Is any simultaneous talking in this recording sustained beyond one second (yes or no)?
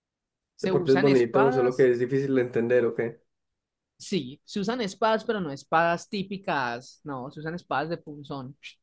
yes